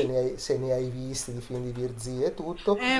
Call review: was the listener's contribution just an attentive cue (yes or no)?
no